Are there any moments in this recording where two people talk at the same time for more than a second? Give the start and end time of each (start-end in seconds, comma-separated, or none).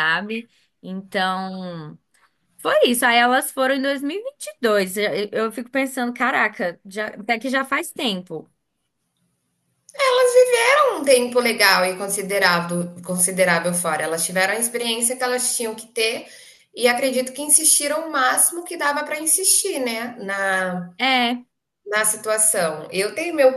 none